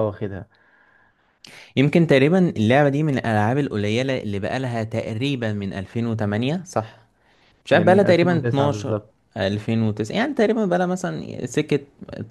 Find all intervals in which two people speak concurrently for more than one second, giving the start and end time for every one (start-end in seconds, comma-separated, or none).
7.7-9.0